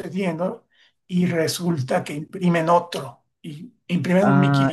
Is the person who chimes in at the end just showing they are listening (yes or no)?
no